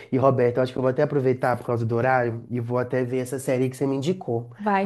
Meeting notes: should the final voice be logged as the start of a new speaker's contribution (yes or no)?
yes